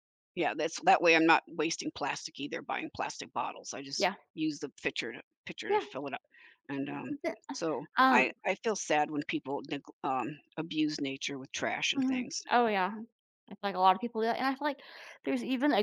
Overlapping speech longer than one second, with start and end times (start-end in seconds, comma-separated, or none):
none